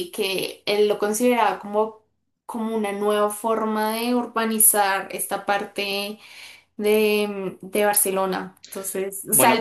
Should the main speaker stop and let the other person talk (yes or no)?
no